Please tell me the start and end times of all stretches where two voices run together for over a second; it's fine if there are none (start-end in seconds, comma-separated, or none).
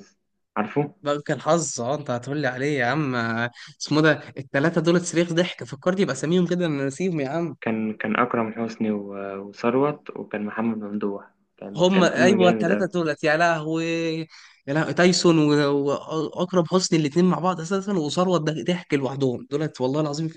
11.8-13.0